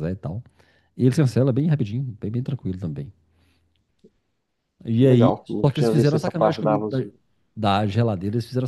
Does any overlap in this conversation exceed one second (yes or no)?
yes